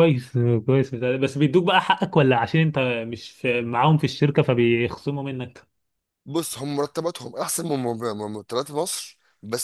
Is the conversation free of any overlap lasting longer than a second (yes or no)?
yes